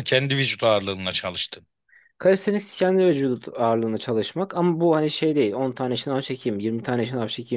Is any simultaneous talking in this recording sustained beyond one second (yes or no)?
no